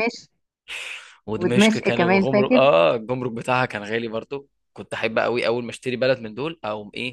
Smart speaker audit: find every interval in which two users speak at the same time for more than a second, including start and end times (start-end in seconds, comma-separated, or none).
1.4-2.6